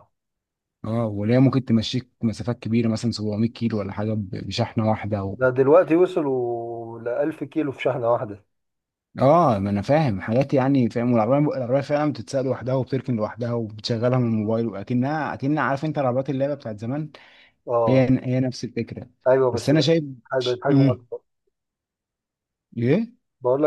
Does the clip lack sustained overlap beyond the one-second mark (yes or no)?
yes